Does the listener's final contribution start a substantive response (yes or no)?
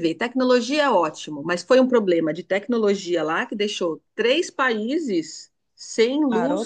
no